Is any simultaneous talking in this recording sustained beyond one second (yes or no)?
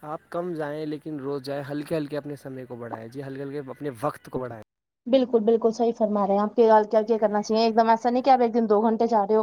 no